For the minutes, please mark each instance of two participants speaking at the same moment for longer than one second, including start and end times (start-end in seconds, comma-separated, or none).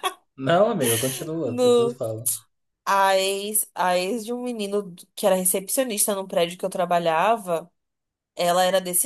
none